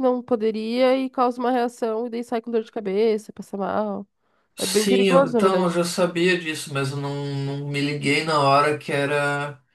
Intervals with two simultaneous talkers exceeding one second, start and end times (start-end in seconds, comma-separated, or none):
4.6-5.8